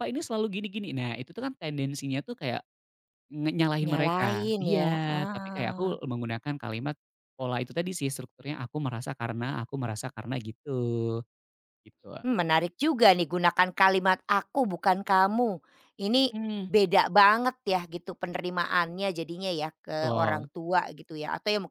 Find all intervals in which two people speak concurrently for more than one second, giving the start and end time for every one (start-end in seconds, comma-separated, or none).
3.9-5.9